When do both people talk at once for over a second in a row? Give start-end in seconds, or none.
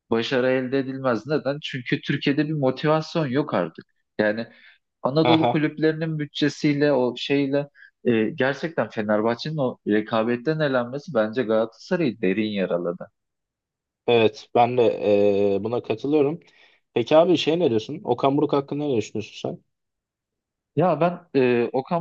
none